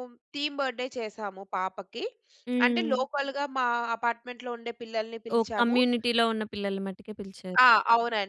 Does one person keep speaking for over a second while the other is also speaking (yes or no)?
no